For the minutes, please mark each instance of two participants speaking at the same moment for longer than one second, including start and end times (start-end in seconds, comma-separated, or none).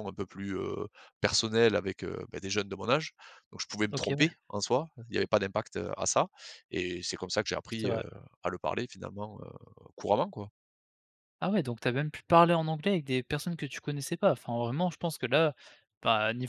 none